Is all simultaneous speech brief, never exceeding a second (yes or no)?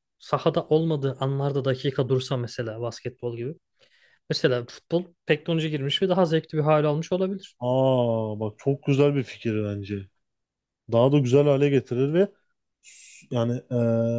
yes